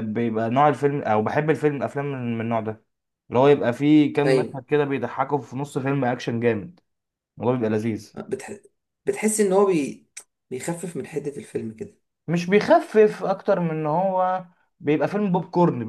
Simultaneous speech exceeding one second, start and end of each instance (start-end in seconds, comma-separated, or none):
none